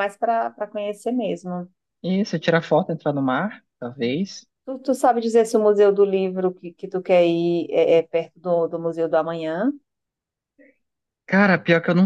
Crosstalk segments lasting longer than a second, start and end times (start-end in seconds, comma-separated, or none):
none